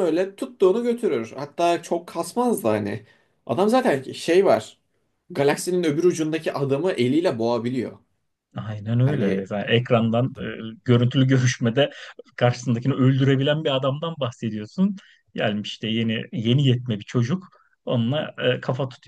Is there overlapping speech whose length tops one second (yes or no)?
no